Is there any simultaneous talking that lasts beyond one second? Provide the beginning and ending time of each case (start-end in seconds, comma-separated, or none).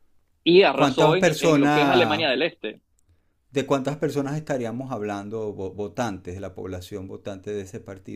0.7-2.3